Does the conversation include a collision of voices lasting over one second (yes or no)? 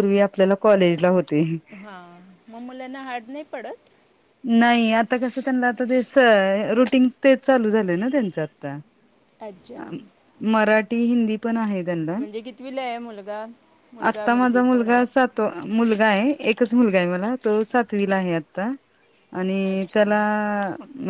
no